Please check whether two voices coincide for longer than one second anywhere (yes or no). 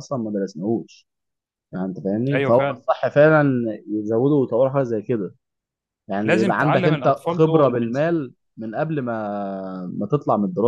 yes